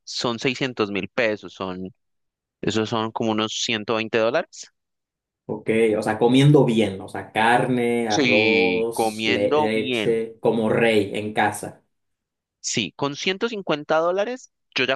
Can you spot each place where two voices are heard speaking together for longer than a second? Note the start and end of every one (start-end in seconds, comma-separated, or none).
8.1-10.2